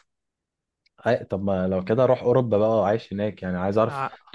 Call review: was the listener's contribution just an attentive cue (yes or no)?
yes